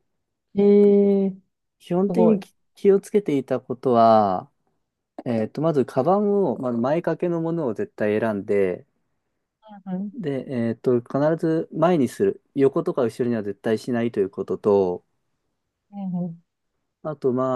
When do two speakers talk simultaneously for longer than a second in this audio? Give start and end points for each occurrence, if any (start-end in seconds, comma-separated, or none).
none